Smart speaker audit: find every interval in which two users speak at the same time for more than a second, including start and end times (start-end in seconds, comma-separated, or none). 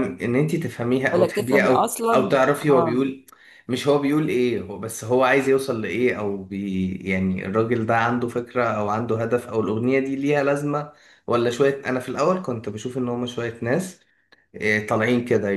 1.1-3.1